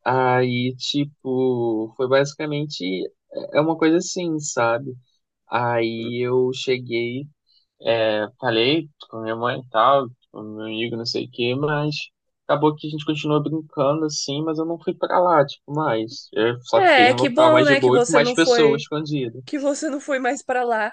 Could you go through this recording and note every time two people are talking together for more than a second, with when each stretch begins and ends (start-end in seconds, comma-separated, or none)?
16.8-18.9